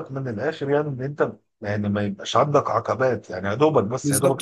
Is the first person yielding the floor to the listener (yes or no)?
yes